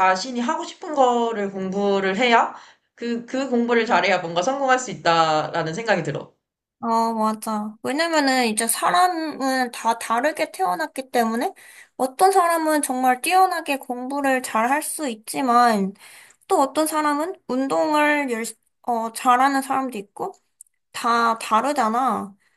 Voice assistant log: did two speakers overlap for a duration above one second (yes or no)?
no